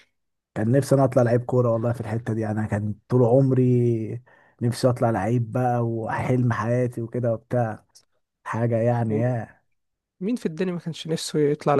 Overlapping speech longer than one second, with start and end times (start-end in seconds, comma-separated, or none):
none